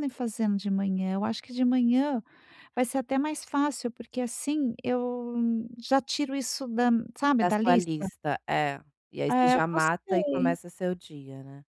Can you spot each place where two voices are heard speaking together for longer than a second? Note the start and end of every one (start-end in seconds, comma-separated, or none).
9.3-10.6